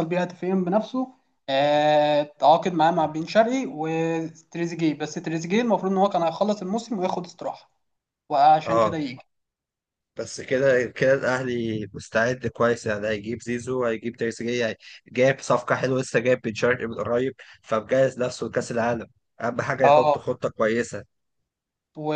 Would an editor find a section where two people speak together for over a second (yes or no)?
no